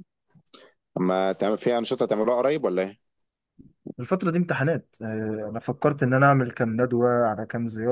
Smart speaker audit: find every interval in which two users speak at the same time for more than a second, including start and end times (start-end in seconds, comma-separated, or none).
none